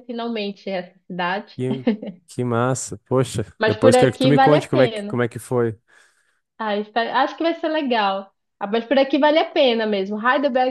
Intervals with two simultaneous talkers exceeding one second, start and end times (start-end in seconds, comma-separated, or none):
3.6-5.2